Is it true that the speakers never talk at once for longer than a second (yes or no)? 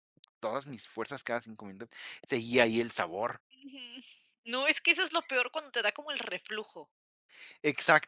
yes